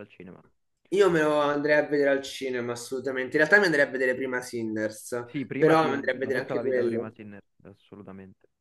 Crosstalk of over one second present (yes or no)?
yes